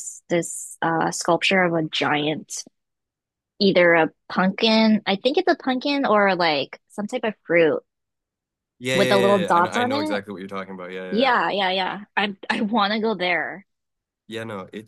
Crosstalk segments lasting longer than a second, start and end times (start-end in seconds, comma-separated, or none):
8.9-10.2